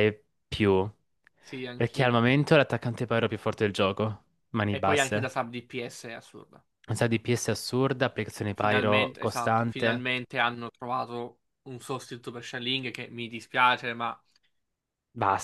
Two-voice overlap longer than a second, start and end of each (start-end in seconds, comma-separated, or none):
8.5-10.1